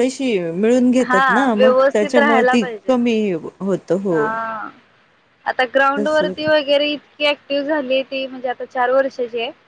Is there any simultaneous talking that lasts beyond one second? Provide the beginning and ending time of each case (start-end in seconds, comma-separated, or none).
1.0-2.9